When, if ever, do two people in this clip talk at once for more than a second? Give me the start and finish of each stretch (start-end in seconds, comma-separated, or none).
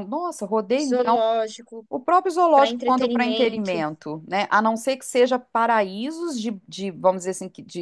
2.5-3.8